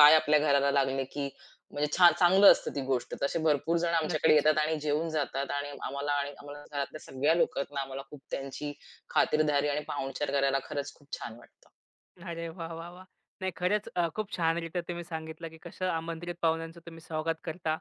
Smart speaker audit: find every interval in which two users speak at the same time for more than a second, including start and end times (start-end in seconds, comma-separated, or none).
none